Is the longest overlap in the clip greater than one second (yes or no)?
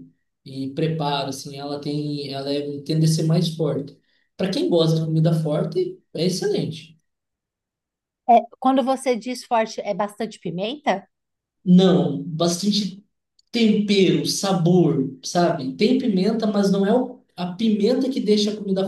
no